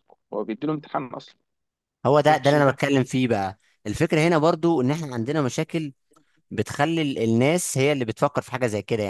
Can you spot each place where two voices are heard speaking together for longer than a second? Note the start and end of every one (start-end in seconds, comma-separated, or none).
none